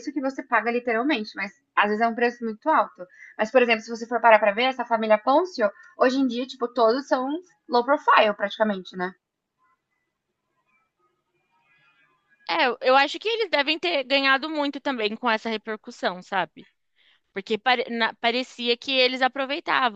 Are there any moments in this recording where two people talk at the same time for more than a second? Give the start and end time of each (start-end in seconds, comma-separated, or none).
none